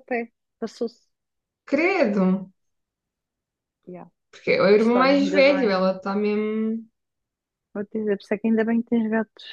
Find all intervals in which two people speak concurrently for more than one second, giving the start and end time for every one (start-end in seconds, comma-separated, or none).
4.8-6.0